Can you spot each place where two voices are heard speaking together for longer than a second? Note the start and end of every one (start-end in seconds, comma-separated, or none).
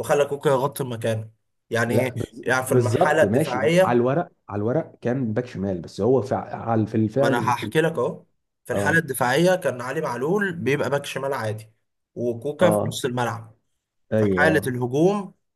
1.9-4.0